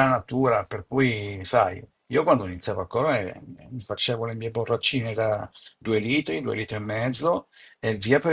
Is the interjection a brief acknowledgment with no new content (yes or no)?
yes